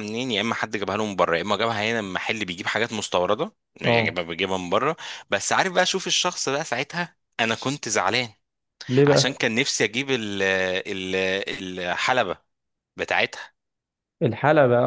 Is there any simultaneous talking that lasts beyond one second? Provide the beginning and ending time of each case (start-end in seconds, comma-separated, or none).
none